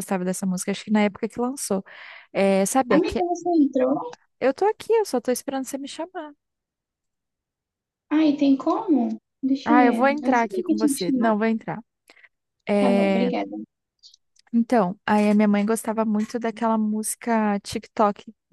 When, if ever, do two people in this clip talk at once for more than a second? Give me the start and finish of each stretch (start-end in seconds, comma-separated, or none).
9.7-11.3